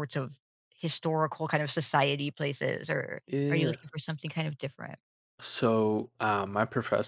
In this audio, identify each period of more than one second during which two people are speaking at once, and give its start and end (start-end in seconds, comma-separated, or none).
none